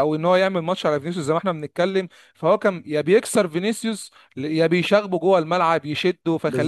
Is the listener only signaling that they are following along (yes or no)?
no